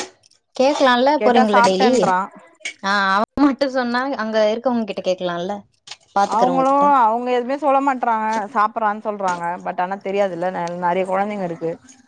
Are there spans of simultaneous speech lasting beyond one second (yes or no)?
no